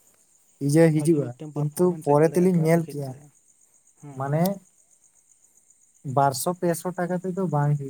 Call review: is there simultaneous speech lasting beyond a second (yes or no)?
yes